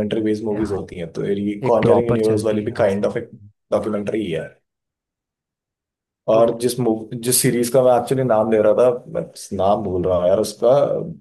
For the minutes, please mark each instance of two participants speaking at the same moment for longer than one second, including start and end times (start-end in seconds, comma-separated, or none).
1.7-3.3